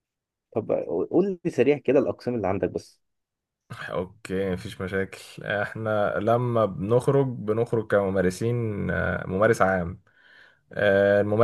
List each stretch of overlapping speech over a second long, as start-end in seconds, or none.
none